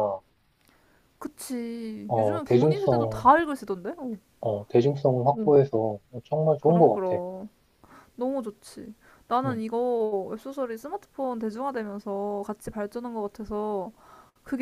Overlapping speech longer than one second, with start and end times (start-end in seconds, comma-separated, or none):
2.1-3.3